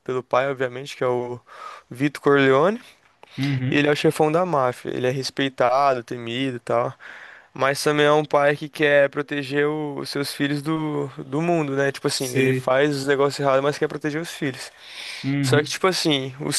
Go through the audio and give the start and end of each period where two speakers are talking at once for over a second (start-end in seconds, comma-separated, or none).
none